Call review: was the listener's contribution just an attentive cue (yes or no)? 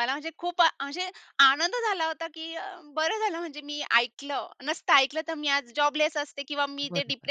yes